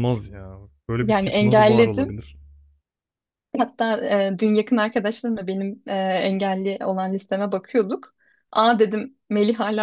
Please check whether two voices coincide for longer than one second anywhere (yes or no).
yes